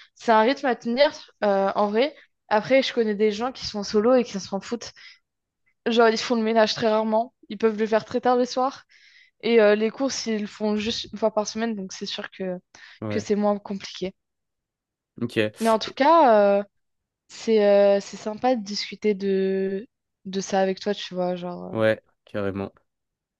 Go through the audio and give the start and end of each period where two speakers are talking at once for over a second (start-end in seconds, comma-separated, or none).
none